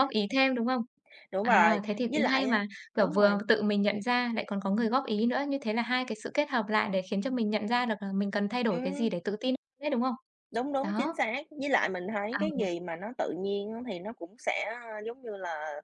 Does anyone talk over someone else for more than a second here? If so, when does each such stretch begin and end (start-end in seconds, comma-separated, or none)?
1.4-3.4